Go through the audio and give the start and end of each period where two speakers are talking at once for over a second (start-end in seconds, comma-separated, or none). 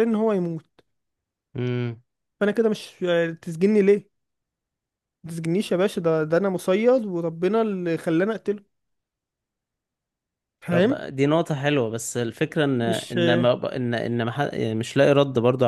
none